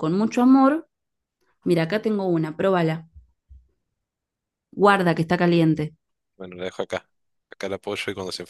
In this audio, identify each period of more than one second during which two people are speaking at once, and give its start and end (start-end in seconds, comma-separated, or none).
none